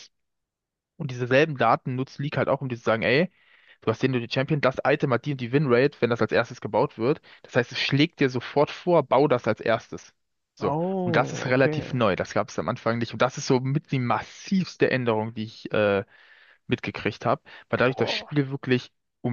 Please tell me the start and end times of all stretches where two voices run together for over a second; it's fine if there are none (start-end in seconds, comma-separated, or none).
10.6-12.0